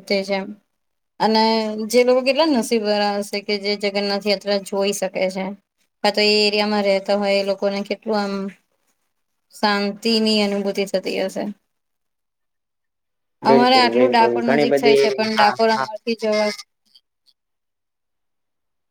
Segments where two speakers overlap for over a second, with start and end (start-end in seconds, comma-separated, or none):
13.5-15.9